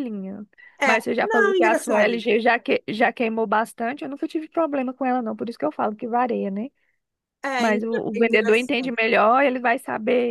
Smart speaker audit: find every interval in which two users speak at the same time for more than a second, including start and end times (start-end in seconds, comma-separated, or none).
0.8-2.2, 7.6-9.0